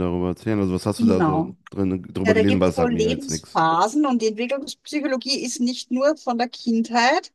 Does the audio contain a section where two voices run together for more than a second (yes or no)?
yes